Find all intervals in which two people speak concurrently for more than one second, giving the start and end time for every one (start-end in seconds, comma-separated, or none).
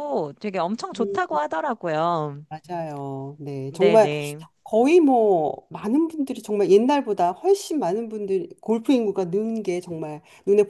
none